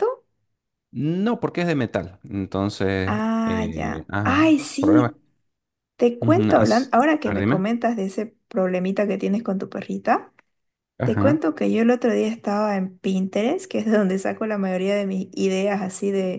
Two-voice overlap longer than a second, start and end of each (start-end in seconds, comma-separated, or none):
3.0-5.2, 6.2-7.6